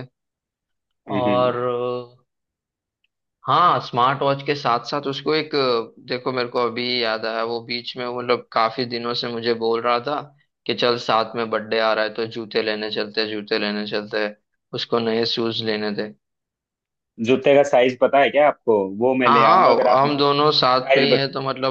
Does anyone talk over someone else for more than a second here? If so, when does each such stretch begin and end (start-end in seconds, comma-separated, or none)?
19.2-21.1